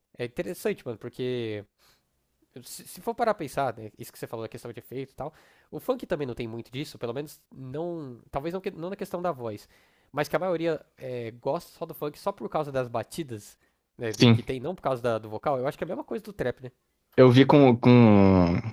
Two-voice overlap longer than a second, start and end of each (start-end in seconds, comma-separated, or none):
none